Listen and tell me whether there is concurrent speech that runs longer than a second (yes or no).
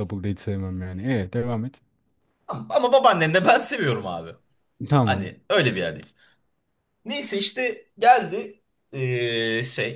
no